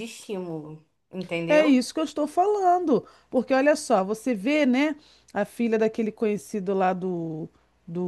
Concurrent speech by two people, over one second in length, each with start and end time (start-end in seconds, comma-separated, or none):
none